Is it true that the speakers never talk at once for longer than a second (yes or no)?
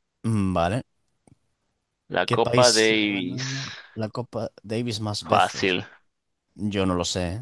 no